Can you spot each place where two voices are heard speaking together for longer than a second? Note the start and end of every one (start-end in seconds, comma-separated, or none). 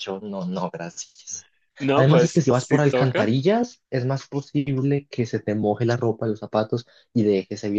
1.9-3.4